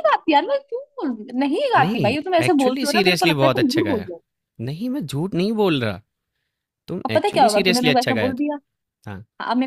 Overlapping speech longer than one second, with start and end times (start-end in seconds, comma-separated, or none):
1.8-4.1, 7.1-8.4